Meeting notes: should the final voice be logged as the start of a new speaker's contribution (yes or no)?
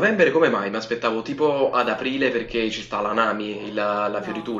yes